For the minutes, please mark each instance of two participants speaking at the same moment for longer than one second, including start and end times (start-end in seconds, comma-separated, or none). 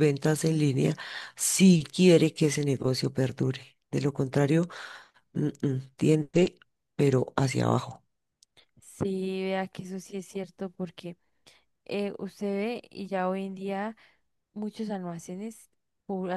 none